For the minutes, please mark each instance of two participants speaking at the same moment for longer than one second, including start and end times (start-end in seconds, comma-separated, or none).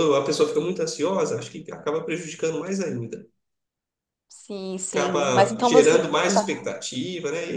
4.9-6.7